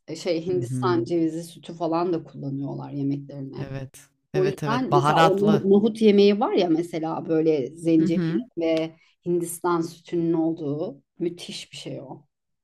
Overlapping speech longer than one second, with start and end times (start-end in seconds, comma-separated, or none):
4.3-5.6